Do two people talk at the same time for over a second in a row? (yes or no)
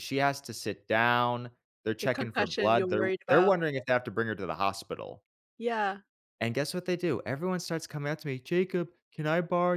yes